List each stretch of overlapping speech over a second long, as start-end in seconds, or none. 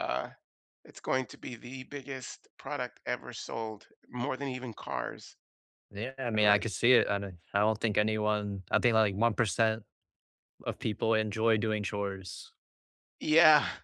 none